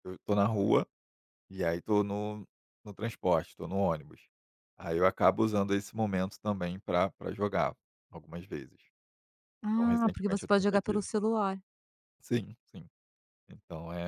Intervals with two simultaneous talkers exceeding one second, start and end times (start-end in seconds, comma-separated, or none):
9.6-11.1